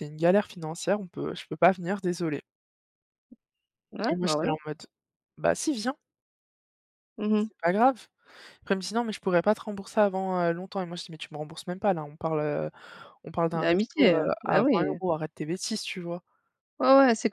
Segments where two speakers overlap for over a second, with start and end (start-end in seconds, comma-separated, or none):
13.5-15.0